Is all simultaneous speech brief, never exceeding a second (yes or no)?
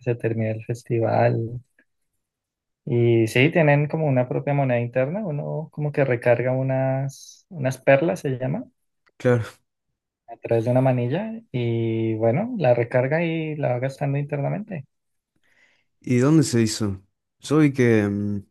yes